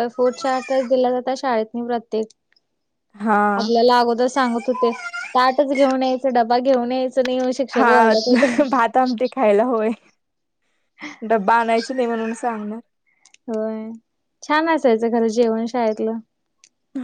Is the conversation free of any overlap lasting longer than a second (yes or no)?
yes